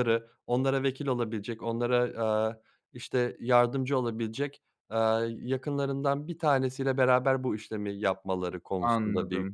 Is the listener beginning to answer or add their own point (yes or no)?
yes